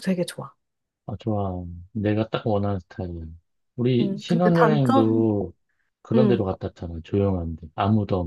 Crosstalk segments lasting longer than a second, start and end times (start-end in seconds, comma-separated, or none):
4.0-5.2